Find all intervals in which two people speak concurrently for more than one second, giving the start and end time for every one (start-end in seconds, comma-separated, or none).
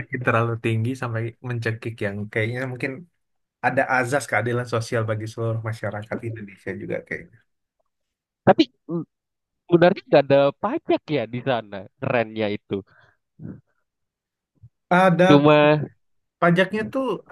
none